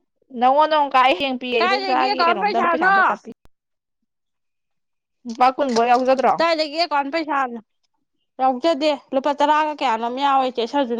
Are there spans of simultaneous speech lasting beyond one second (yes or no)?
yes